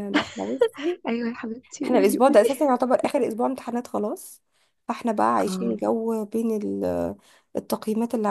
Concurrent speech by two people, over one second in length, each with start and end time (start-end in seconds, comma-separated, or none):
none